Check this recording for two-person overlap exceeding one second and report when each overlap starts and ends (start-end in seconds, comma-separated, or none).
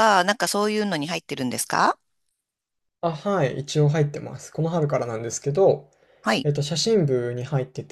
none